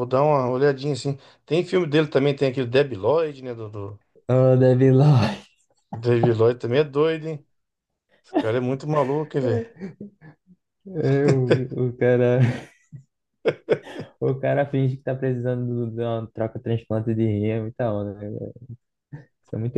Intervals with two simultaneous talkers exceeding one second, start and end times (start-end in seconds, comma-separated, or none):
none